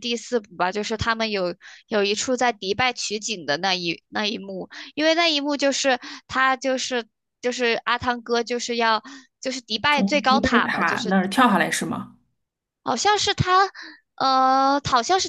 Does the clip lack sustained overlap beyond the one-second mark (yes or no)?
no